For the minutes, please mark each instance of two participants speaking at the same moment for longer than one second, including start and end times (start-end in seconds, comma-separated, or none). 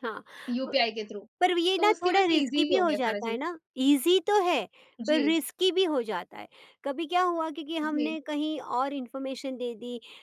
1.8-3.4